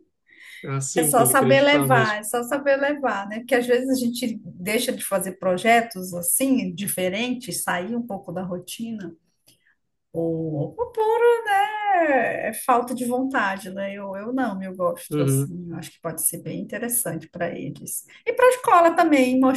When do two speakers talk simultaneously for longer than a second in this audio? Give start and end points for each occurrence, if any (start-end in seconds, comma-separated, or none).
1.0-2.2